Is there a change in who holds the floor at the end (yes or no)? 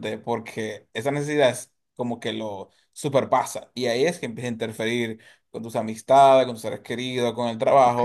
yes